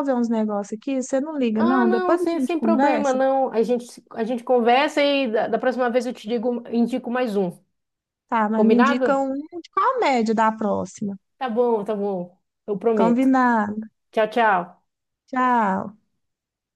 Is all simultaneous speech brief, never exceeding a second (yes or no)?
no